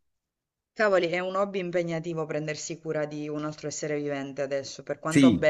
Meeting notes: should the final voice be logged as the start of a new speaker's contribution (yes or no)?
yes